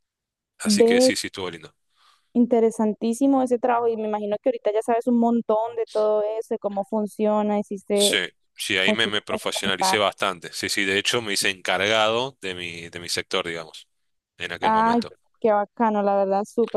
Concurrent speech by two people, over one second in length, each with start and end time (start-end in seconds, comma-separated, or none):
8.9-10.1